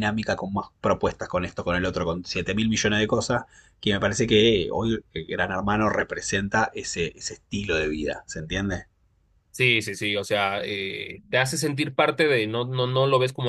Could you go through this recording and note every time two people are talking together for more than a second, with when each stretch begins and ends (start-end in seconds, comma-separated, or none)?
none